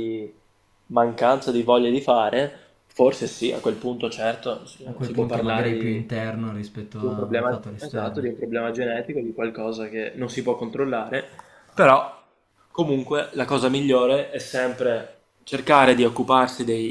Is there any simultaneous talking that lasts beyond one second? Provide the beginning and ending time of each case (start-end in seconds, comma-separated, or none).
4.8-6.2, 7.0-8.3